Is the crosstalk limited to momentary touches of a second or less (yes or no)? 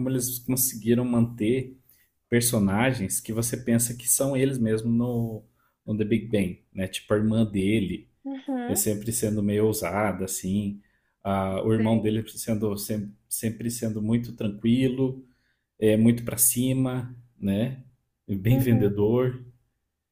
yes